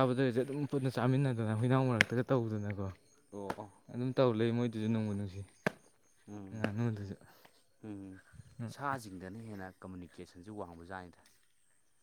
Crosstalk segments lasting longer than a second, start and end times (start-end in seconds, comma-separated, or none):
none